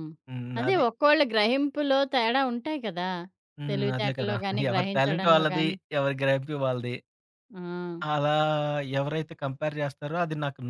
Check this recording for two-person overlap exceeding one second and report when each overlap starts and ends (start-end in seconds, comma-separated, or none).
3.7-5.8